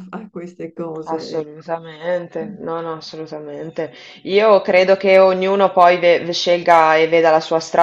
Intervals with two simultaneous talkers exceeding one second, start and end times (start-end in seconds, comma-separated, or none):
none